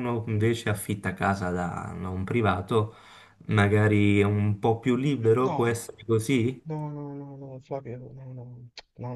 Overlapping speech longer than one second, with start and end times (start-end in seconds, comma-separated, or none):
none